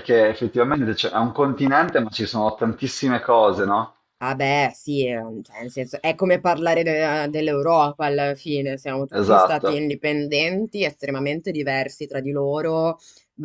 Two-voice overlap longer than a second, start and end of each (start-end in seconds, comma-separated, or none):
none